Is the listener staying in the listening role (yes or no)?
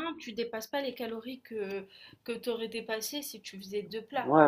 no